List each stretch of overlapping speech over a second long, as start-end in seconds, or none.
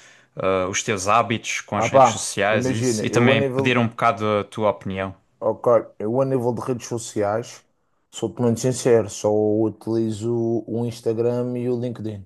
1.7-3.9